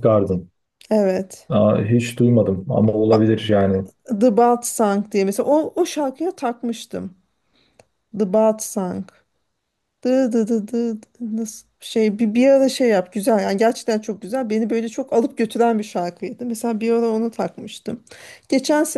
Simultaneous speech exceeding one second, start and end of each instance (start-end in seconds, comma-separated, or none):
none